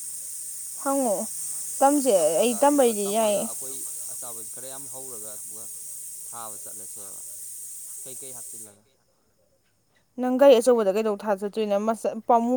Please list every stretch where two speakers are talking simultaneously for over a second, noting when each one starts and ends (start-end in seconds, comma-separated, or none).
none